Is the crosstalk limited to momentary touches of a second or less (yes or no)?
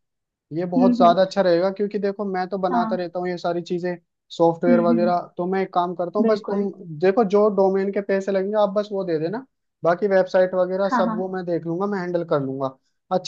yes